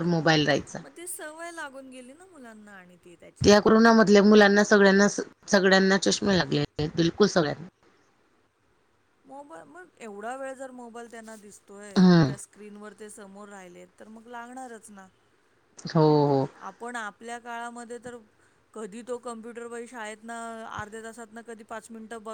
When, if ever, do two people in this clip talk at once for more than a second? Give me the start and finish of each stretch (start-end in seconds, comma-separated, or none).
none